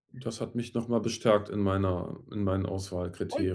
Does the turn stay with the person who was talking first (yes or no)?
no